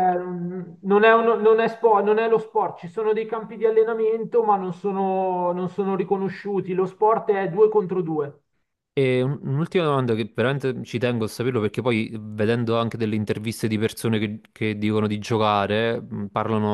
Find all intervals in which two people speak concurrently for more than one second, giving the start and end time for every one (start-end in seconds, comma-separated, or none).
none